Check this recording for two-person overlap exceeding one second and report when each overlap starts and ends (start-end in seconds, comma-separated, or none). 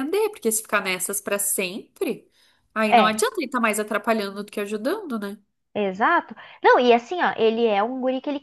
none